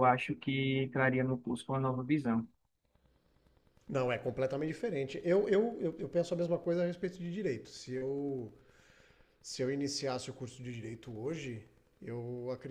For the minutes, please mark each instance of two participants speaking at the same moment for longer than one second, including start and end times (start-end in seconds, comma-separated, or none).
none